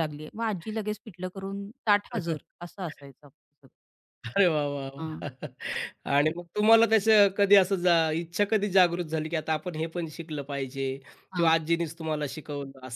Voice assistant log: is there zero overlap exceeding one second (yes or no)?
yes